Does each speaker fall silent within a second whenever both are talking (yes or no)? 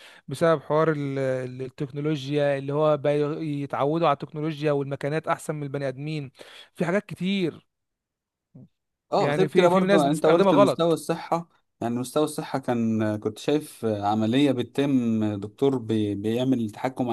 no